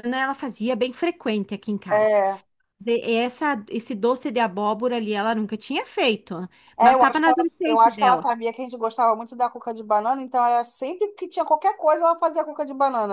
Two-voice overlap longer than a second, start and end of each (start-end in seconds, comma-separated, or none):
6.8-8.3